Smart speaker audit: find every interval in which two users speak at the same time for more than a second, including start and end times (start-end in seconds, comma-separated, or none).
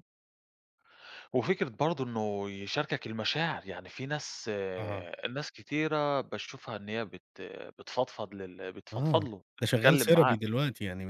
8.9-10.4